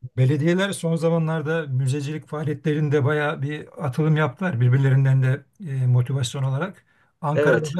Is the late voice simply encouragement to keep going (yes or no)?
yes